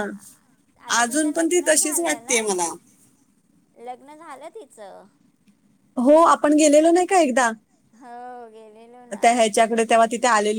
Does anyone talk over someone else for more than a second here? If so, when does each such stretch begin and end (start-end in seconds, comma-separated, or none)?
1.0-2.4